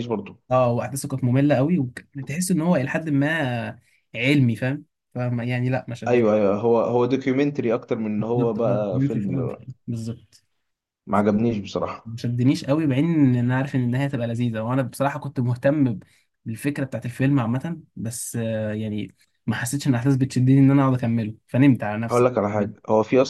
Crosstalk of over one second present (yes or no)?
yes